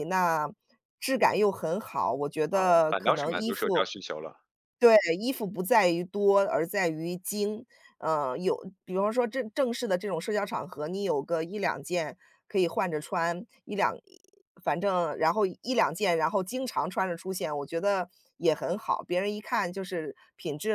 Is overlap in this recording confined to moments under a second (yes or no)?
no